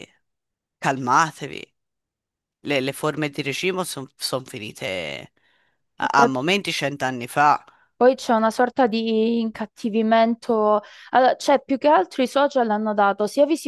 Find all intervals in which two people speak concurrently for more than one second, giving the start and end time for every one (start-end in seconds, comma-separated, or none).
none